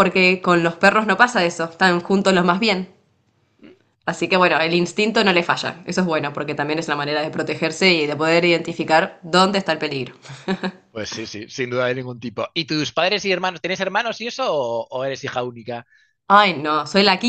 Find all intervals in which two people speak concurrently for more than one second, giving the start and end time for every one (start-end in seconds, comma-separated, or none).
none